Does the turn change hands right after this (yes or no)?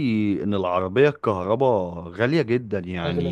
no